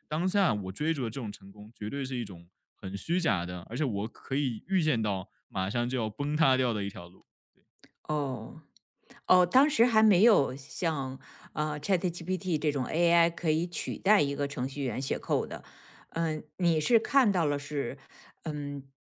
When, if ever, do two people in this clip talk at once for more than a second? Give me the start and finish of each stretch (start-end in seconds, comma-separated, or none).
none